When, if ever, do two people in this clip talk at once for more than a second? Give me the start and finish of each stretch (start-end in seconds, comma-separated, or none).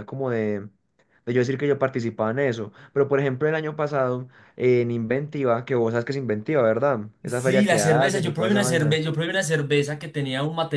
7.2-9.0